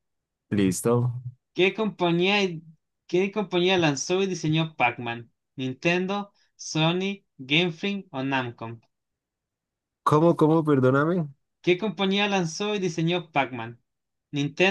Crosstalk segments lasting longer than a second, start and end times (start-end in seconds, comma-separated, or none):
none